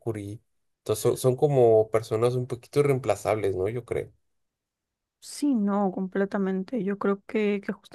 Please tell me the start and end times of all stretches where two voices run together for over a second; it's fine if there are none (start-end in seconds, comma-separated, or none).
none